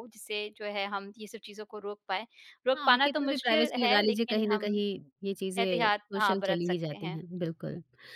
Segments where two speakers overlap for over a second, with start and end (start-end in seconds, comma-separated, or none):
2.7-4.7, 5.6-7.2